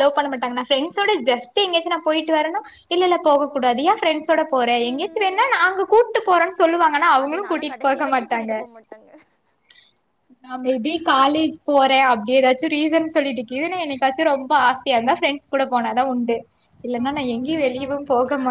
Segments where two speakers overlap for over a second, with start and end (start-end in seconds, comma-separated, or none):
7.2-8.5